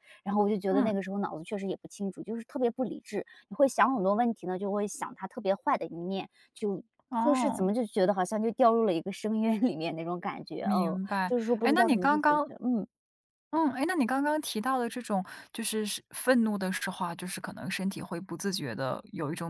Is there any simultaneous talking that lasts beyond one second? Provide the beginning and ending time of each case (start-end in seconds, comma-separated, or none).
10.6-12.5